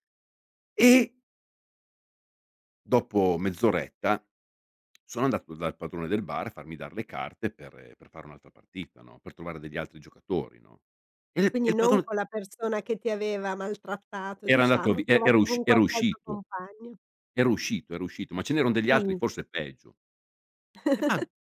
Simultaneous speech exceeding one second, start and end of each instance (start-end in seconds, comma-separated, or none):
14.4-16.4